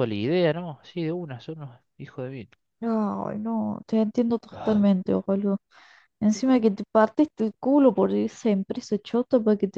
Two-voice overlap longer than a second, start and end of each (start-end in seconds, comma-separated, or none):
none